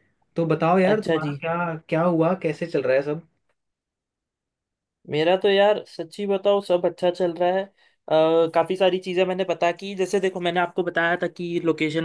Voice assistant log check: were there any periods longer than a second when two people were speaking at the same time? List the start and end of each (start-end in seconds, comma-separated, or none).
none